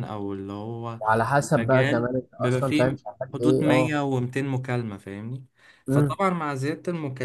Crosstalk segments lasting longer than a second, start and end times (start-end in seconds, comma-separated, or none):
1.4-4.0